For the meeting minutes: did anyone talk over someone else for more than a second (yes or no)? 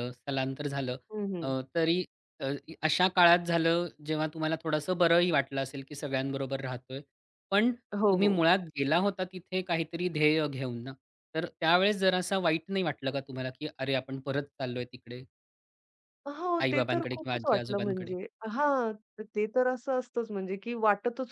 yes